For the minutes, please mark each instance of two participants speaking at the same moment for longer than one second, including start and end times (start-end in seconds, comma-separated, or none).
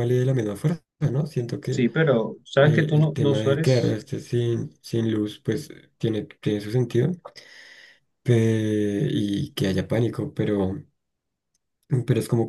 2.5-4.0